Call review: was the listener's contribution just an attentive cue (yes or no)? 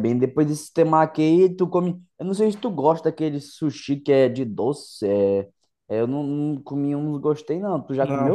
no